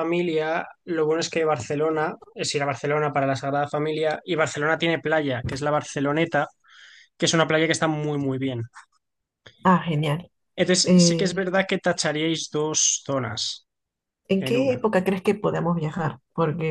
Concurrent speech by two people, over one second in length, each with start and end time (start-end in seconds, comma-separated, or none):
none